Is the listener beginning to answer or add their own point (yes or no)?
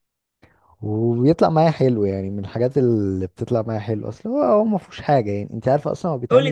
yes